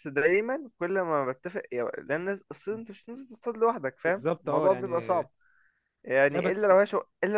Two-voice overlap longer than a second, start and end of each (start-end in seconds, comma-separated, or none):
4.0-5.2